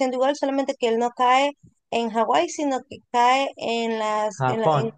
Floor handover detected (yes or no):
no